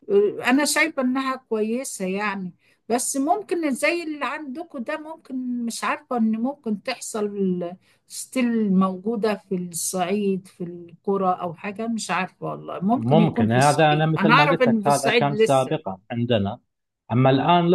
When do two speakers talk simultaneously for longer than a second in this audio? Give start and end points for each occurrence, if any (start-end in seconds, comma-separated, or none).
13.0-15.7